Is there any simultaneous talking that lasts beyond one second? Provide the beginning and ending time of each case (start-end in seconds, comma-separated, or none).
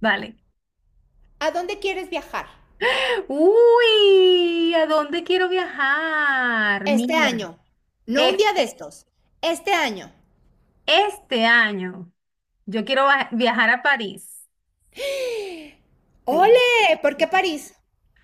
none